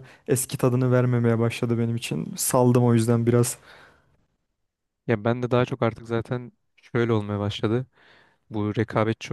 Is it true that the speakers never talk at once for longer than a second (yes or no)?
yes